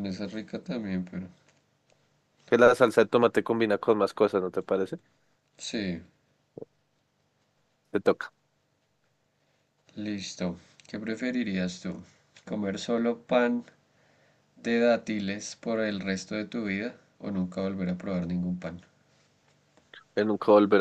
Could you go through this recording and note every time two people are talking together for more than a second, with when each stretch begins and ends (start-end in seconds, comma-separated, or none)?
none